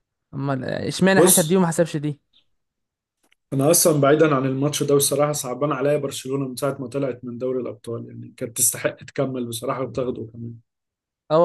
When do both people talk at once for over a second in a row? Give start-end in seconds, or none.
none